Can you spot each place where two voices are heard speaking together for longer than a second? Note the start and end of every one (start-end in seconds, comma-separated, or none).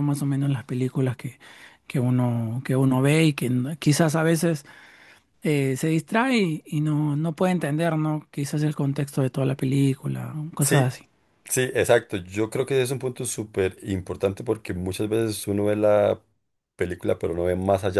none